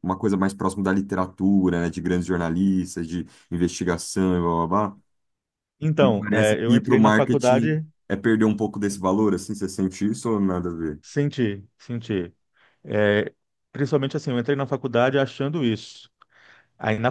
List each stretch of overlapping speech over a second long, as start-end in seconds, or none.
6.0-7.8